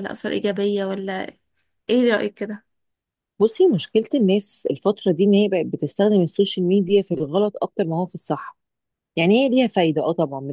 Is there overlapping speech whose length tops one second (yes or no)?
no